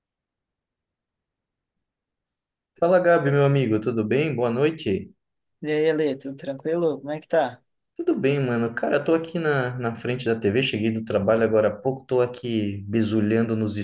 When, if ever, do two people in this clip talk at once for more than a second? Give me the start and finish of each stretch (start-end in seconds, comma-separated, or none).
none